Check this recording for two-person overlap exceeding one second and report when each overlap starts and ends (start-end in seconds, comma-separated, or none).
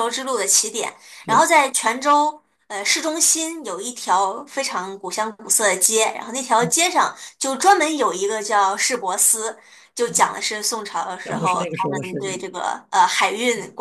11.2-12.5